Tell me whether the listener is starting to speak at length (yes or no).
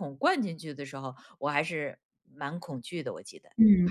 yes